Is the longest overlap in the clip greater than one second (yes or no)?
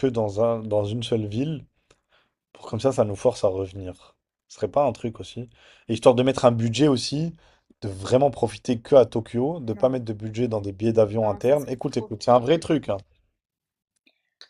yes